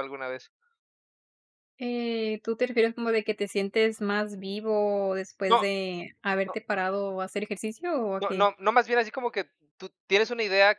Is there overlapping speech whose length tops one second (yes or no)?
no